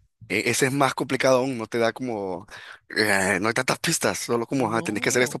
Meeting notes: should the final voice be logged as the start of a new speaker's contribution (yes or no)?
no